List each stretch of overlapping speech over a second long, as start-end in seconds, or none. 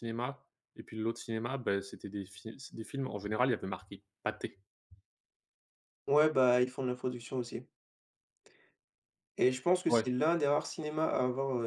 none